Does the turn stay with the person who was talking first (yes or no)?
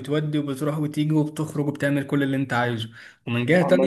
yes